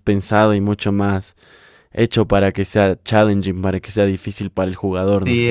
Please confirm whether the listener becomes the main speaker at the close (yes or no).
yes